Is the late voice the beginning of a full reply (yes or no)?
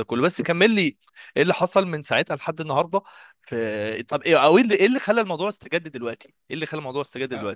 yes